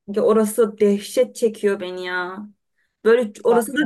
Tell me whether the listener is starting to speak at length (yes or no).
no